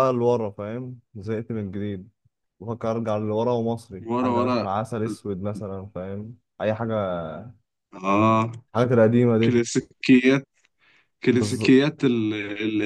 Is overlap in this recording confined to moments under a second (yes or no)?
yes